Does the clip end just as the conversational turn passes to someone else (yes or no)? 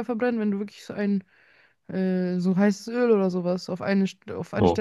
yes